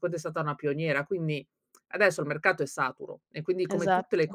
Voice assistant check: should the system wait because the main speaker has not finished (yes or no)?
yes